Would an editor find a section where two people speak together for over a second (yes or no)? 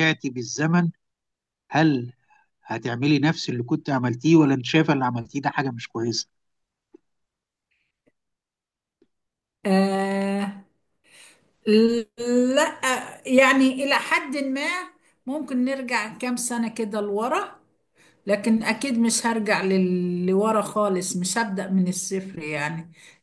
no